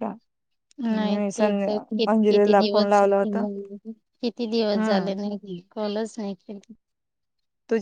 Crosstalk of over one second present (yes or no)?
yes